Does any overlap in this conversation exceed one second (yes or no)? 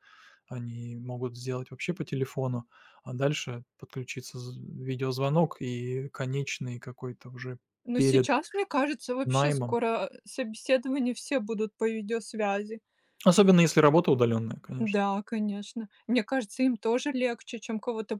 no